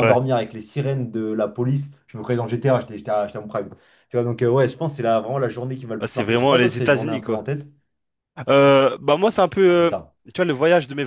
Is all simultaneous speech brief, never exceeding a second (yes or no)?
no